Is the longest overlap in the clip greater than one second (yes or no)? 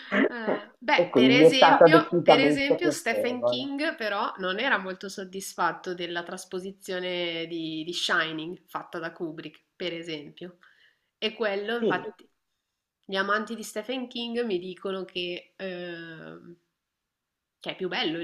yes